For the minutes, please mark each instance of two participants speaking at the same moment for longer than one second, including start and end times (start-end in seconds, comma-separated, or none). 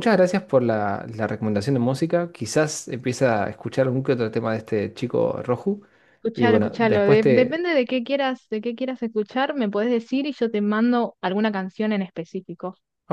6.3-7.7